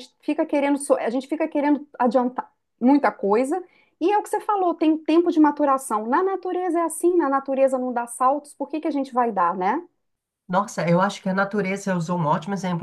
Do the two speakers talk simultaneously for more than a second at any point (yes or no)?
no